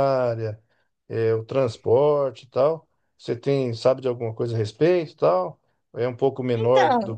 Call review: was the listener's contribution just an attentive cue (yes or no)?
yes